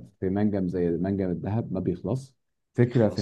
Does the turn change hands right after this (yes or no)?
no